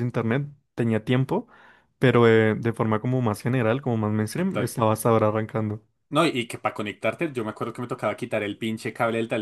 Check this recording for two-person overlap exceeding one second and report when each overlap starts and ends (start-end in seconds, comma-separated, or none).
none